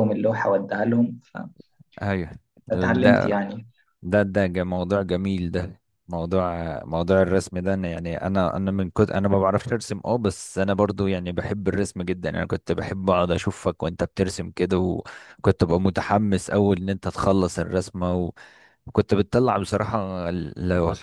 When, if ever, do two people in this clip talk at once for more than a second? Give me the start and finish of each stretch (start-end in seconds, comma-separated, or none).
none